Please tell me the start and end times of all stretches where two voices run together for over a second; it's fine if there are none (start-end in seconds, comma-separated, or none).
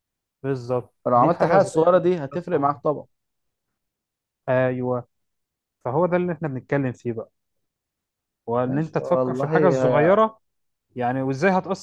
1.0-2.8, 8.6-10.2